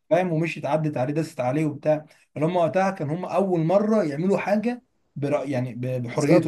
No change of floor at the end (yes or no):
no